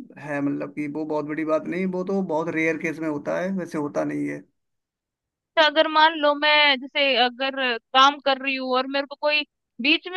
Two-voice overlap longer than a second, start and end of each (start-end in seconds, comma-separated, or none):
none